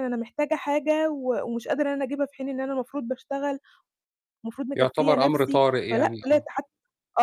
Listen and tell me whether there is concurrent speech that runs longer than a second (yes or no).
yes